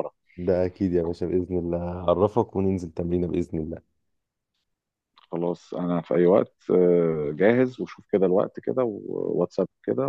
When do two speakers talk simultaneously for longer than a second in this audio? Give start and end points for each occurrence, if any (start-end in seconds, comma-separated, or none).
none